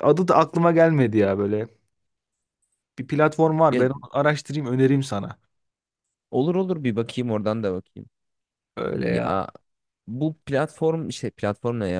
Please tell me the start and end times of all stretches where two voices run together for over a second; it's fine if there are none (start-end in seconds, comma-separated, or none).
none